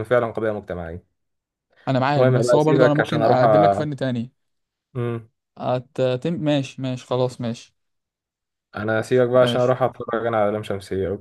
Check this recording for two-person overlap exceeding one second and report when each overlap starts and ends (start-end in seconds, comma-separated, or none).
2.2-3.9